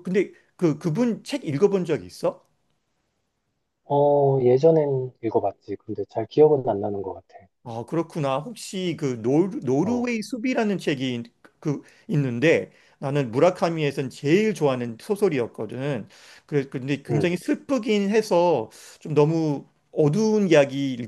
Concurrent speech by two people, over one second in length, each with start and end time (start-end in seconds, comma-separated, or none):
none